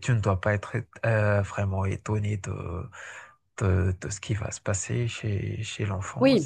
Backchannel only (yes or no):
no